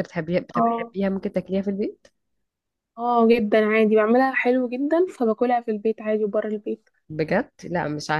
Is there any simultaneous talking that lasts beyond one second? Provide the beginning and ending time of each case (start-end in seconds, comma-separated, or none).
none